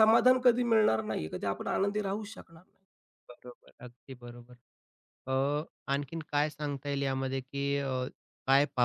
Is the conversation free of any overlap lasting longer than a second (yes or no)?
yes